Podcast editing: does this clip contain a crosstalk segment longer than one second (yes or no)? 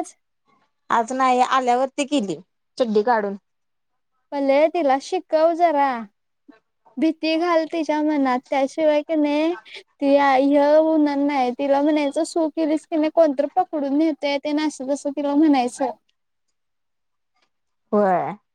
no